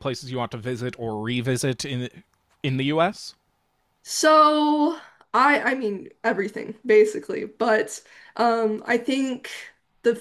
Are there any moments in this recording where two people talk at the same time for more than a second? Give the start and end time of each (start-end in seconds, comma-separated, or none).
none